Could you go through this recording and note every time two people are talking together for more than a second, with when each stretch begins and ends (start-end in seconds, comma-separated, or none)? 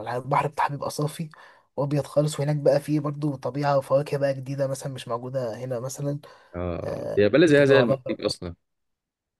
6.9-8.3